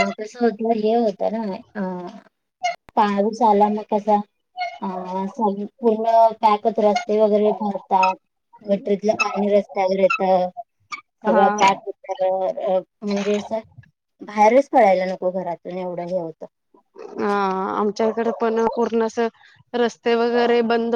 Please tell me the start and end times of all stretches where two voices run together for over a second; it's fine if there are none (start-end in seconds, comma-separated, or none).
none